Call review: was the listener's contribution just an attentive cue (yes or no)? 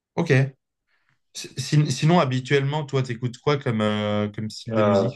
no